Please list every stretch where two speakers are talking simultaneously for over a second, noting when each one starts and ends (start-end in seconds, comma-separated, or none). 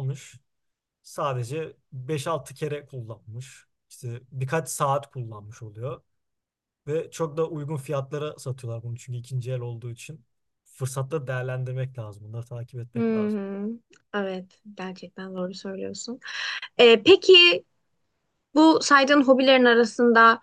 none